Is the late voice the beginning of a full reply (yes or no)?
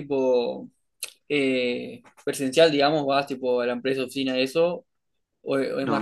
yes